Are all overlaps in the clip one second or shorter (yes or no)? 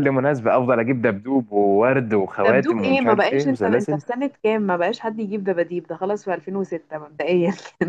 no